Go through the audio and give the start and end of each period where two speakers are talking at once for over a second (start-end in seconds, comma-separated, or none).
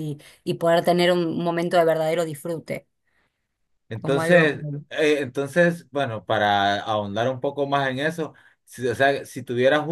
none